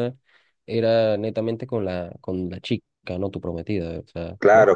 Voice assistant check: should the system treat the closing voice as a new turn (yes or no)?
yes